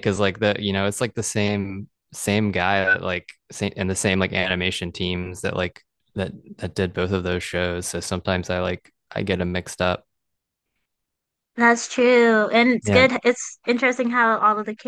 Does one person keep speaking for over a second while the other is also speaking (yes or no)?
no